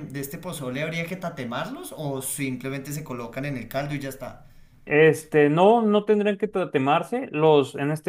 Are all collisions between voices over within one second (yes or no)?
yes